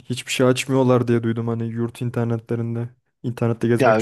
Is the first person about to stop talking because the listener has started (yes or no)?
yes